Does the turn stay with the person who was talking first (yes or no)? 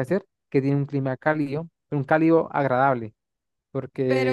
no